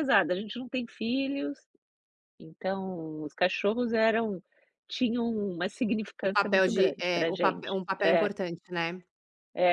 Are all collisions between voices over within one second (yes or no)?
no